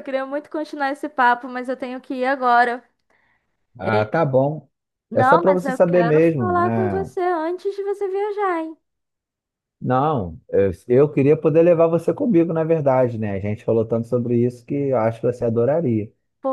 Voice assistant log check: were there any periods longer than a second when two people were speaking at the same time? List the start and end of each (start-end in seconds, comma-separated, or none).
5.1-7.1